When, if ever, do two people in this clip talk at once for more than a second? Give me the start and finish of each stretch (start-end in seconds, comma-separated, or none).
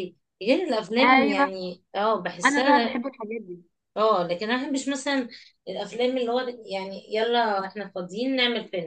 none